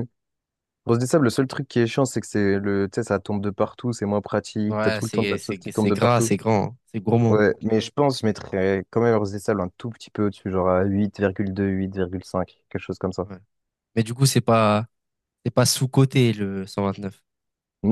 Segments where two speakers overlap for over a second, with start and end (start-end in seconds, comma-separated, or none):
4.7-6.3